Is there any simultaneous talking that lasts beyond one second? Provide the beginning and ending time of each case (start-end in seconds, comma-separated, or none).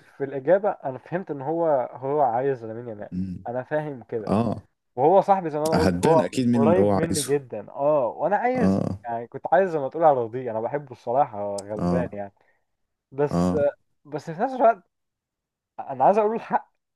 5.7-7.3